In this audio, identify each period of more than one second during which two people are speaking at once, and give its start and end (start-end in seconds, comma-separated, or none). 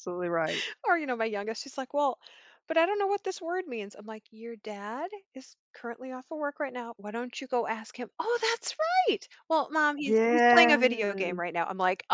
10.0-11.4